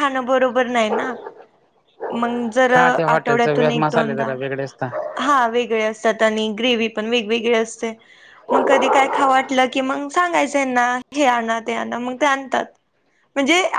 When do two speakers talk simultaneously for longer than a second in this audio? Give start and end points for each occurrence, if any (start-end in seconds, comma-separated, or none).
3.1-4.3